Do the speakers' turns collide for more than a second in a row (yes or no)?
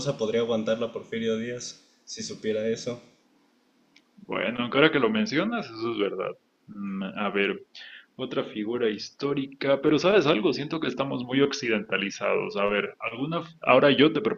no